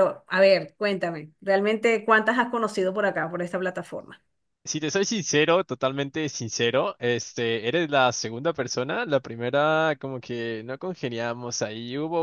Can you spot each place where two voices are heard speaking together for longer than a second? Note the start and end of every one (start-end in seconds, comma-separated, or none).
none